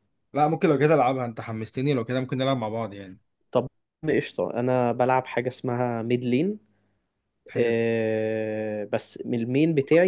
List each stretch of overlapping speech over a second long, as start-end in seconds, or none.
none